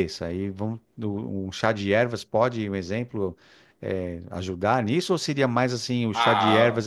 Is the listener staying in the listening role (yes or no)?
yes